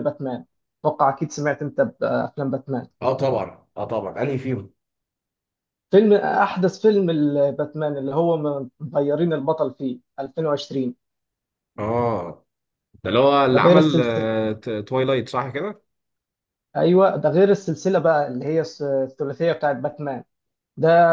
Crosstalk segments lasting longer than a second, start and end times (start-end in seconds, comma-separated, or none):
none